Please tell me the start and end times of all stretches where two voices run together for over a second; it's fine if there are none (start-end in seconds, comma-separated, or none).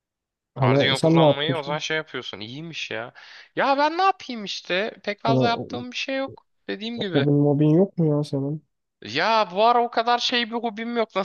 0.6-1.8